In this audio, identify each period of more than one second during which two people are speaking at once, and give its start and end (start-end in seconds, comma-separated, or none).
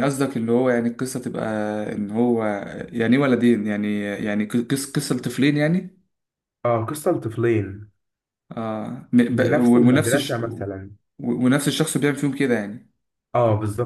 9.3-10.7